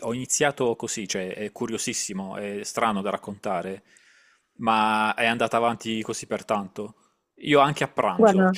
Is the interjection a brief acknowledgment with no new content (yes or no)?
yes